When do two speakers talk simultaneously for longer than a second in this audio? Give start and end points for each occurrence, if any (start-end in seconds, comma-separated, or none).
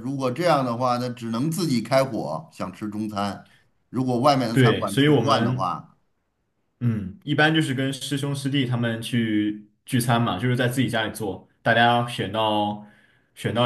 4.5-5.7